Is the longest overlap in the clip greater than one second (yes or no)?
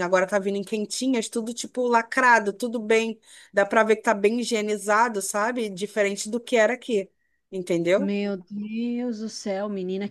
no